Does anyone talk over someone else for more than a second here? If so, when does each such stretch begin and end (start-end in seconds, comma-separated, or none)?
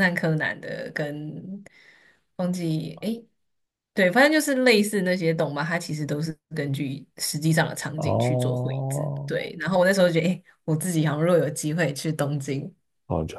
8.0-9.3